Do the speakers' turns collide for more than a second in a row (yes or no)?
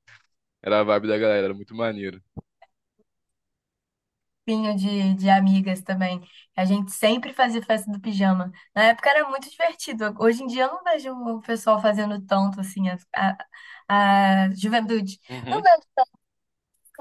no